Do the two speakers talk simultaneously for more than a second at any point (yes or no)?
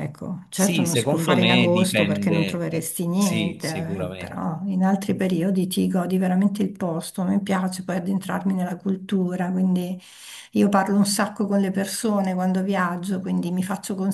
yes